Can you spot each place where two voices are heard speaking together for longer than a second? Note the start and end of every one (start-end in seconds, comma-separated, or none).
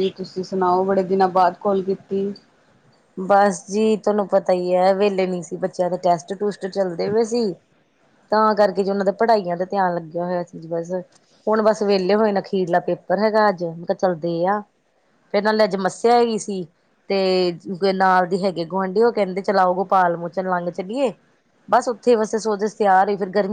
none